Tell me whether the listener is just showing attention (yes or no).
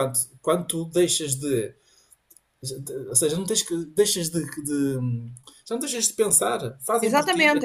no